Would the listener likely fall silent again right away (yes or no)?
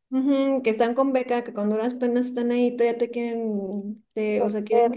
yes